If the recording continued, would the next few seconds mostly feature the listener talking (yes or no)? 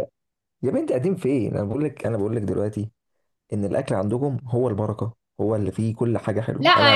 yes